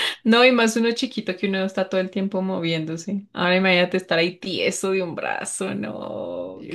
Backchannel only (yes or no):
no